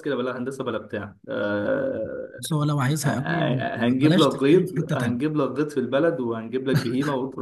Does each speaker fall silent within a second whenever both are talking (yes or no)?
no